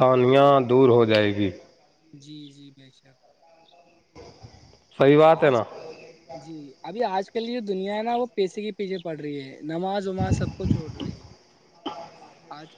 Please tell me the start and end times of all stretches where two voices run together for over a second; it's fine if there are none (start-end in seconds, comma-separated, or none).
none